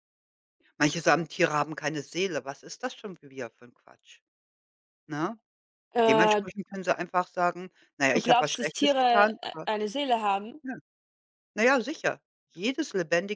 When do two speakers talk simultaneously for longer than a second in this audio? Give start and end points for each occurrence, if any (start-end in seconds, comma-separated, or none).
8.1-9.7